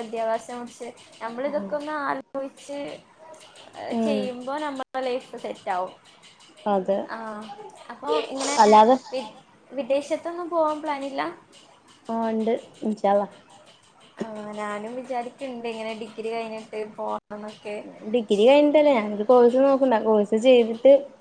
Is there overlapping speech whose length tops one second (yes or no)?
no